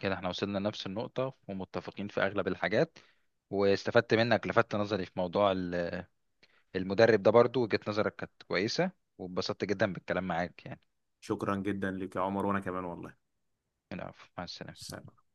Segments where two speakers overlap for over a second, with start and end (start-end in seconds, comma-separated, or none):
none